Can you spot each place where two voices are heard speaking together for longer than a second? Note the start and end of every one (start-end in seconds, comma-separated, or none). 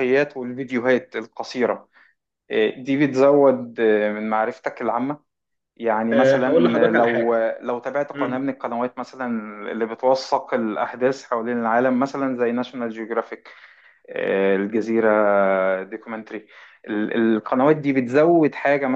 6.1-7.4